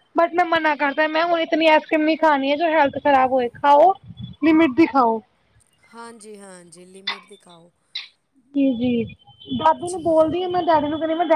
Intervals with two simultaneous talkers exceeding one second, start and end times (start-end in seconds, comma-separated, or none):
none